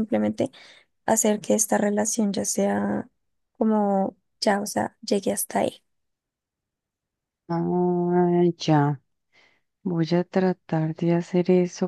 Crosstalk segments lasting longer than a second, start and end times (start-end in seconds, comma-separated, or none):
none